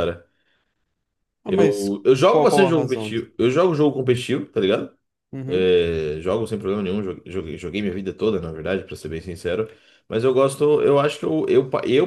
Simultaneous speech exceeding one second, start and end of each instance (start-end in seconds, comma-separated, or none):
1.5-3.1